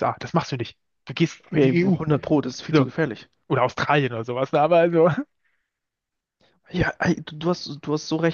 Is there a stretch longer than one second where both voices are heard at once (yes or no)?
no